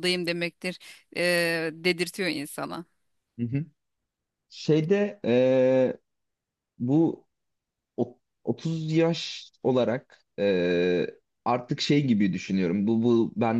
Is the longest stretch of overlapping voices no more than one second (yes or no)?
yes